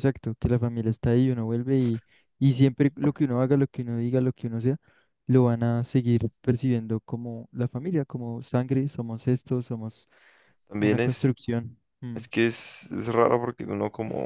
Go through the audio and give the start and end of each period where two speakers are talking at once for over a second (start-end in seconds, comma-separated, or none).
none